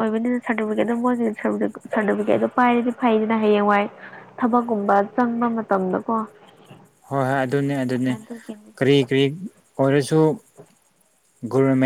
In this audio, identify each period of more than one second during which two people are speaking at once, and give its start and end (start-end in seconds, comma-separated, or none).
none